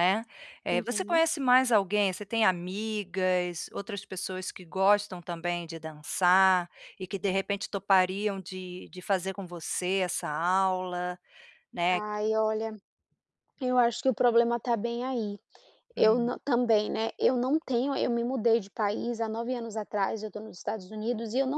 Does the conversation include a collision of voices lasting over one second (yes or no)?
no